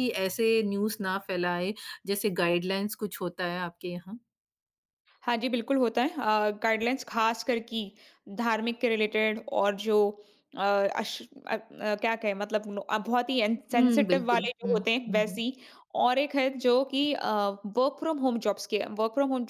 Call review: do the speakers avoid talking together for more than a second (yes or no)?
no